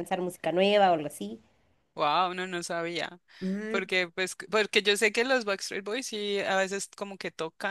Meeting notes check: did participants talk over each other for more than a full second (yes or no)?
no